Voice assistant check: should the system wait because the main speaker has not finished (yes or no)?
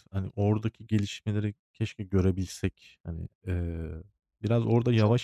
no